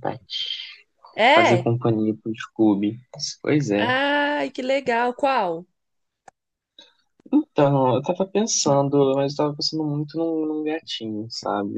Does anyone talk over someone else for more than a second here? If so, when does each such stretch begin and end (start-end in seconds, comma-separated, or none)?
none